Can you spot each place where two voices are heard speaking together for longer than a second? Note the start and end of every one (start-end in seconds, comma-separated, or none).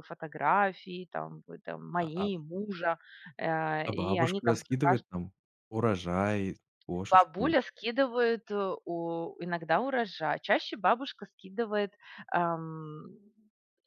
3.8-5.0